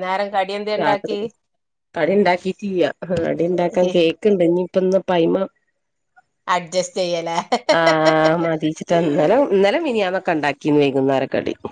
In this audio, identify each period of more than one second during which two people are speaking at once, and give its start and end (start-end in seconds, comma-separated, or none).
none